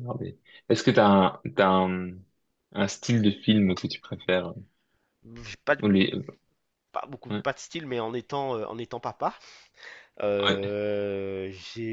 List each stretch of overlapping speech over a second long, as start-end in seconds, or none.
none